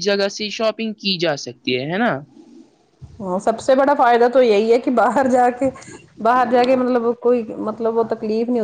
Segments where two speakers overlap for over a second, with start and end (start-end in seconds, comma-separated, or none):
none